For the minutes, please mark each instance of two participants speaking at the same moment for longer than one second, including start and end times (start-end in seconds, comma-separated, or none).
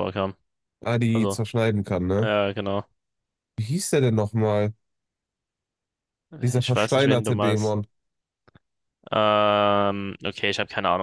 6.6-7.8